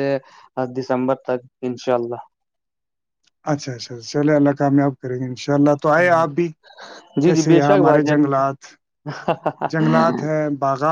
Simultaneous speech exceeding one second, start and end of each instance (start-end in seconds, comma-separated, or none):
none